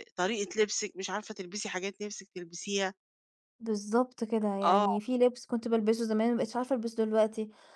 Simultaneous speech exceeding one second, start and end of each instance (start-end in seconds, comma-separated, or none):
none